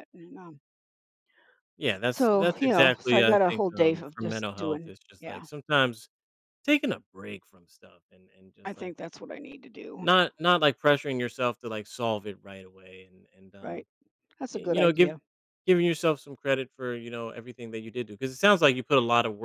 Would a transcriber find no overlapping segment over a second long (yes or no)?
no